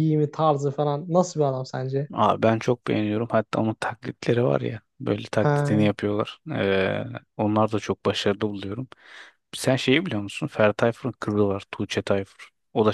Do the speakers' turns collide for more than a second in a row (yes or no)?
no